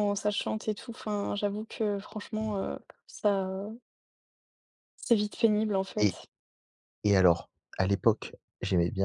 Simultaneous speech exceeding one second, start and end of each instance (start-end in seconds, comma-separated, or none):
none